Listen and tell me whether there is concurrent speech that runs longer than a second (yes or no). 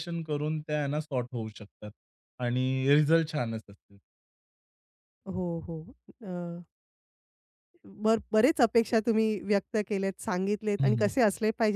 no